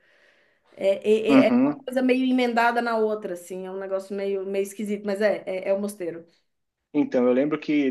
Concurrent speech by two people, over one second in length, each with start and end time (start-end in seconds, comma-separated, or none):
none